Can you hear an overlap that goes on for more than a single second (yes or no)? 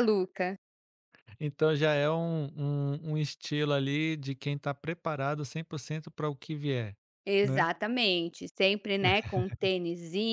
no